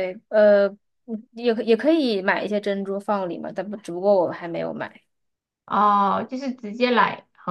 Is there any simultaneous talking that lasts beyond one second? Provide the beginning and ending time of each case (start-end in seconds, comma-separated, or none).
none